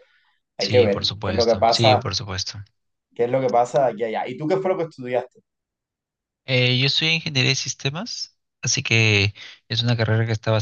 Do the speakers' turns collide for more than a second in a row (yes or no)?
yes